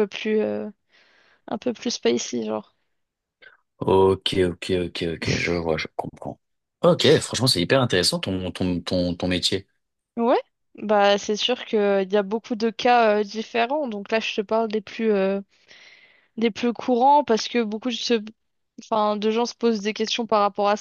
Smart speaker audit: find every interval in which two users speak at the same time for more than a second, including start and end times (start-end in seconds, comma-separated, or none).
none